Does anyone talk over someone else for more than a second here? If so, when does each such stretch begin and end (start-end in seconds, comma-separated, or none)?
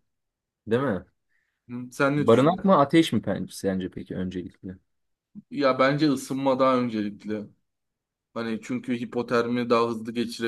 none